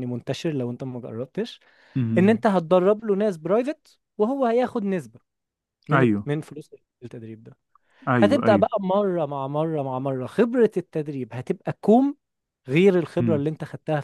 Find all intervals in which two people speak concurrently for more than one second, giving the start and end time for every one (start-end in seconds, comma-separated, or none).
none